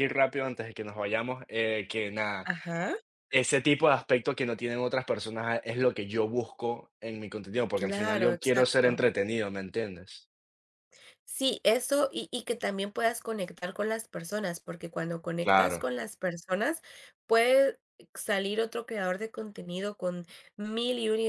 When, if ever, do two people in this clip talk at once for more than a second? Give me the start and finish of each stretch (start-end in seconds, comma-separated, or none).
7.7-9.0